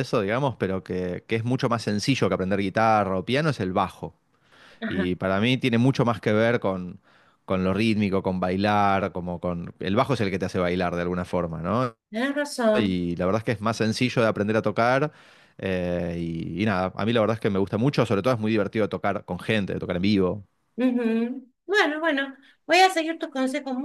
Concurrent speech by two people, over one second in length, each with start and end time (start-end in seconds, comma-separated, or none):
none